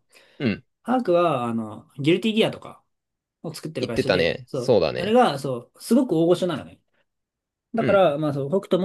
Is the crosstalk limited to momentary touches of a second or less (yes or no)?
no